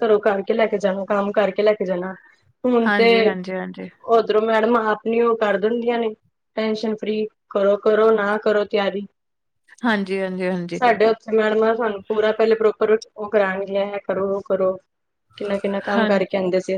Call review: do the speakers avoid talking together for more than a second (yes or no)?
yes